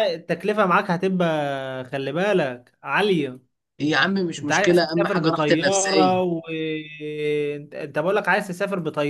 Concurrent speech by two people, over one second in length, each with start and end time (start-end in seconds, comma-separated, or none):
4.4-6.2